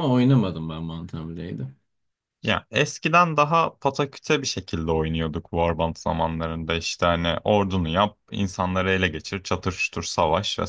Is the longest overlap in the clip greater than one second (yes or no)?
no